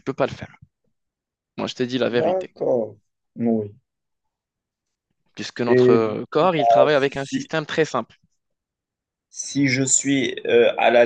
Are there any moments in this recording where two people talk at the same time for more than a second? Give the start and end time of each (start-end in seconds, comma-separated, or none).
5.6-7.5